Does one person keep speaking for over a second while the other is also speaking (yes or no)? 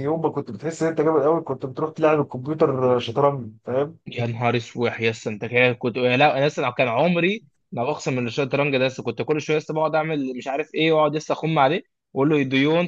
no